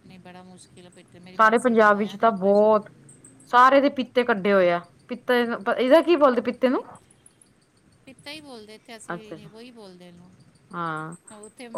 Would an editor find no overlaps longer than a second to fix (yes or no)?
no